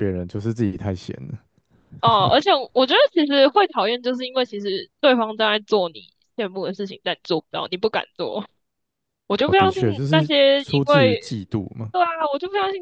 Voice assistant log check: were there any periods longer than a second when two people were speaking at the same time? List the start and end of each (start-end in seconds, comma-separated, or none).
9.4-11.2